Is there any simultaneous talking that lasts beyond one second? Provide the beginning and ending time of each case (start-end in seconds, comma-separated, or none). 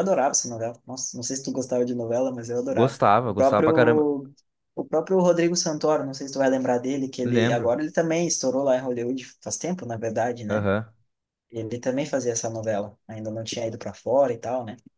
2.7-4.1